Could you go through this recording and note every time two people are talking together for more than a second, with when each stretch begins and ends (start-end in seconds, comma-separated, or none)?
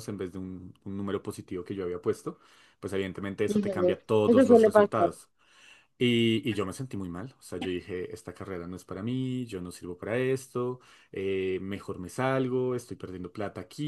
3.5-5.1